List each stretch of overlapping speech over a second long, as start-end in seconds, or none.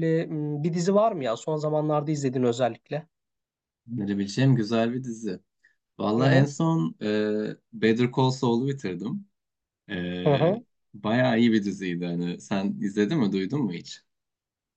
none